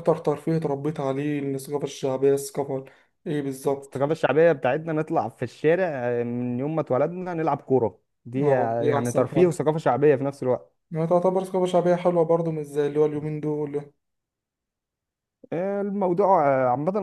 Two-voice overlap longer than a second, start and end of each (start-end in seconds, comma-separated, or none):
8.4-9.6